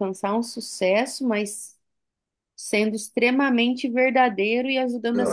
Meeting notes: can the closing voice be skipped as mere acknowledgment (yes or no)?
no